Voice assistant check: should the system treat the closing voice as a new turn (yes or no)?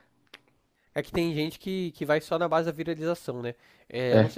no